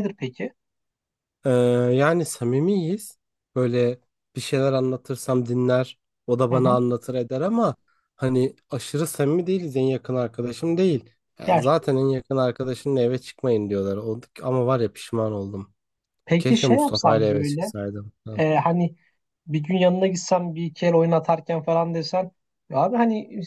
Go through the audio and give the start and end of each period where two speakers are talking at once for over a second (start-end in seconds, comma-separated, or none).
16.4-17.7